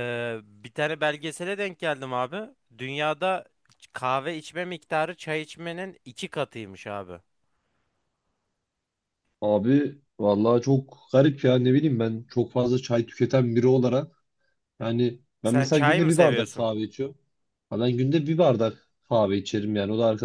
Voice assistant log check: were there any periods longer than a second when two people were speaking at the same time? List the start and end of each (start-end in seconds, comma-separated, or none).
15.4-16.7